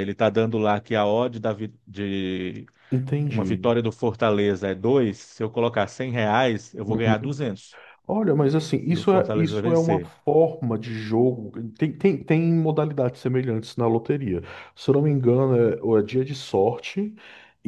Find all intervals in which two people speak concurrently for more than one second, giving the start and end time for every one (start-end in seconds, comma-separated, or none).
8.9-10.1